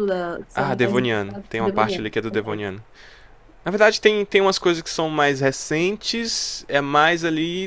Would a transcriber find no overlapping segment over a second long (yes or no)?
no